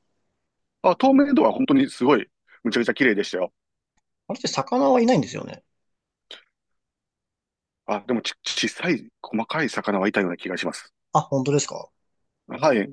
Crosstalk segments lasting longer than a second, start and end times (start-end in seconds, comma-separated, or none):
none